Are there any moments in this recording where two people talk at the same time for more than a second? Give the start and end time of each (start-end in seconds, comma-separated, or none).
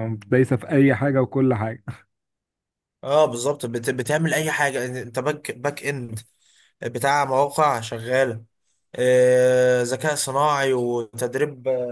none